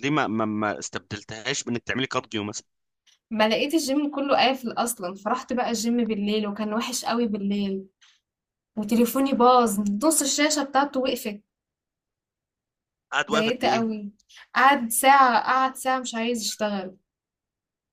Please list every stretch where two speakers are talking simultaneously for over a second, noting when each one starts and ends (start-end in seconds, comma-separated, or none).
none